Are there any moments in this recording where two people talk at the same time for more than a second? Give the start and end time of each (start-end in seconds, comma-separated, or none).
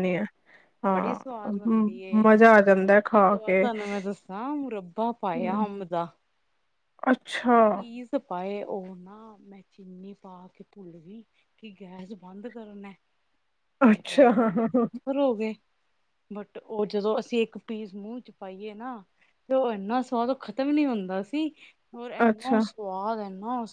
0.9-2.2